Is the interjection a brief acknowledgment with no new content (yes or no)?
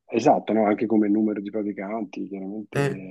yes